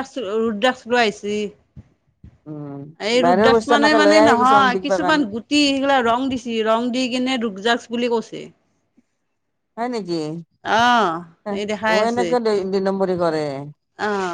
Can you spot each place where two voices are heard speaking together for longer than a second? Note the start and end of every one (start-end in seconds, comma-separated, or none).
3.2-5.2